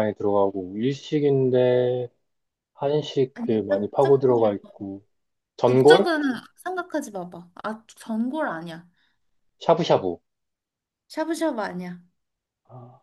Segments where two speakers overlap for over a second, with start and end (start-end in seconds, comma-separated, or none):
3.3-4.9